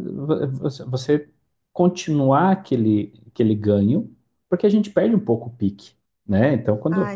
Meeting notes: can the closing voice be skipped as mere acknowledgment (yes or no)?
yes